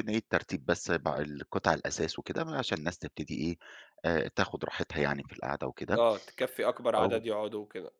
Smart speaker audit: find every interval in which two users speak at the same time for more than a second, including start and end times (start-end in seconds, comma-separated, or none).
none